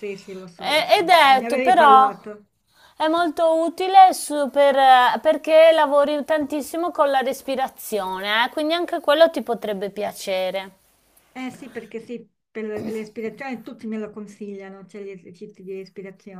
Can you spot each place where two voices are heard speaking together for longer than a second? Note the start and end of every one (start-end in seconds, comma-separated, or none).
0.6-2.1